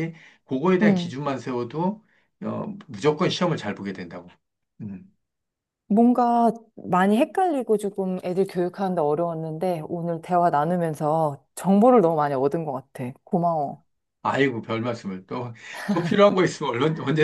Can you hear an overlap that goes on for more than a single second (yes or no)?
no